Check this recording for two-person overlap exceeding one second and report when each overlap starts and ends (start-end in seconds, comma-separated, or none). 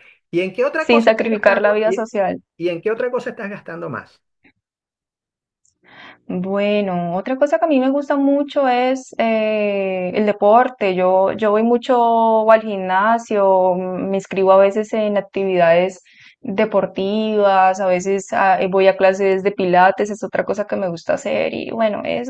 0.8-2.1